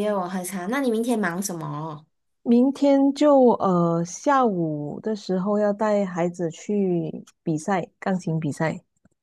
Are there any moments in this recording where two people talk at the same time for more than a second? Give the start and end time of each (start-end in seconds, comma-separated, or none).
none